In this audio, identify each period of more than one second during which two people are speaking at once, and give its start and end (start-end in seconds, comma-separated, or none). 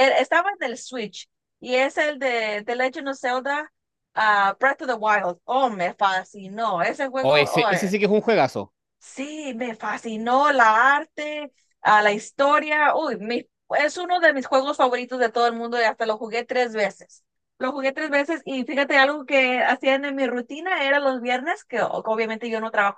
none